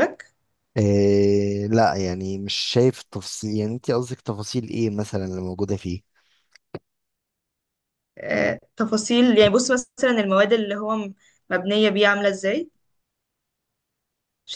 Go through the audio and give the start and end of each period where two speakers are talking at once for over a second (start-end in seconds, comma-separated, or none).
none